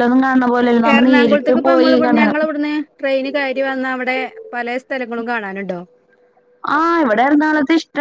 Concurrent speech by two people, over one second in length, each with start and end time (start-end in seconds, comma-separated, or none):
0.9-2.4